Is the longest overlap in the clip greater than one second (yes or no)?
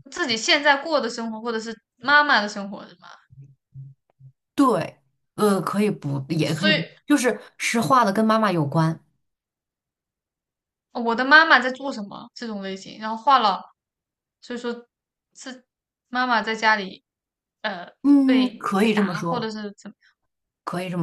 yes